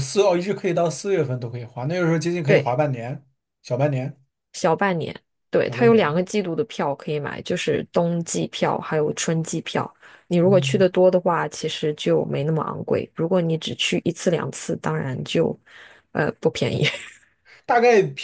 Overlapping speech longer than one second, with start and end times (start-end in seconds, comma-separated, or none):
none